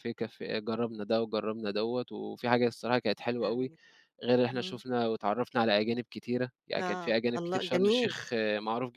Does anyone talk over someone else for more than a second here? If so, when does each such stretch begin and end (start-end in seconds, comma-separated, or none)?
6.8-8.1